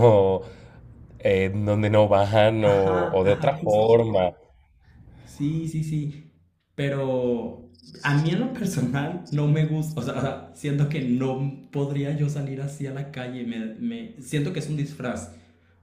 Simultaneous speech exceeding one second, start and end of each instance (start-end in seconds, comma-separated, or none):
2.6-3.9